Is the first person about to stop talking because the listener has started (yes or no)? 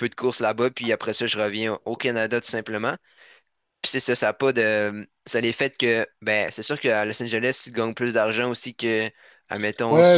yes